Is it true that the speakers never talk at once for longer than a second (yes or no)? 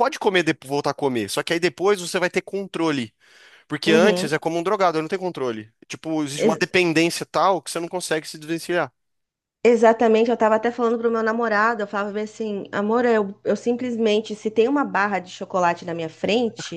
yes